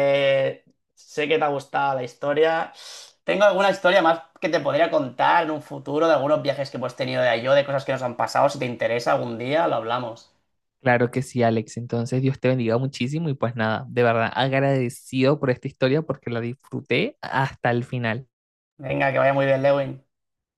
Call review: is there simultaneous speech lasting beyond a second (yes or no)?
no